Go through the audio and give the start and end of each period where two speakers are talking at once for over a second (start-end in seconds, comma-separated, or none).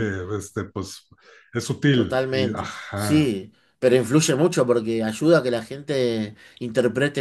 1.9-3.3